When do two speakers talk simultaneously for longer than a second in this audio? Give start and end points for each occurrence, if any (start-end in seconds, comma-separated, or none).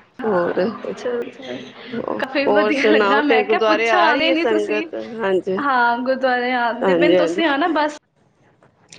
2.5-4.8